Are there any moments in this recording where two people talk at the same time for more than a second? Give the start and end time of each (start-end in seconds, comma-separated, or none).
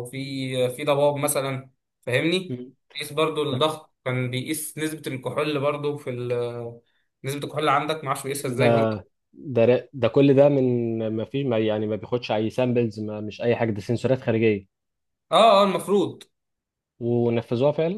none